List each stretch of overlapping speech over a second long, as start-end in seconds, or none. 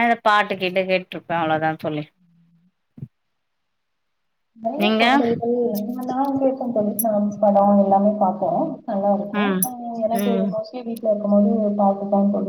none